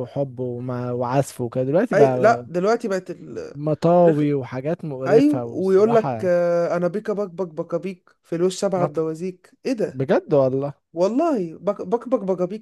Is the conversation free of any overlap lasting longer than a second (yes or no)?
no